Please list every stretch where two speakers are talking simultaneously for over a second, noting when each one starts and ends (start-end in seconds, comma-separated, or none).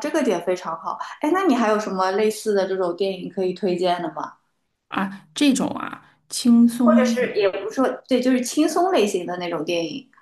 none